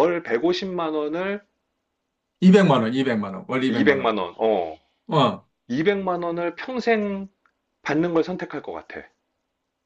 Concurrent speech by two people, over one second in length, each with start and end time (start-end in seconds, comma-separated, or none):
none